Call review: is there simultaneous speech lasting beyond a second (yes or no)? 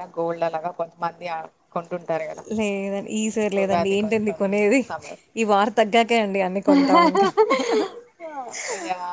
no